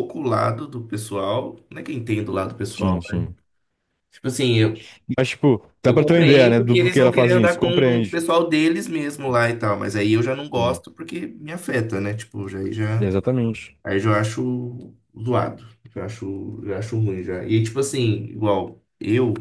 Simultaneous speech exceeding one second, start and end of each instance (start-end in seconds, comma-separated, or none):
5.9-8.2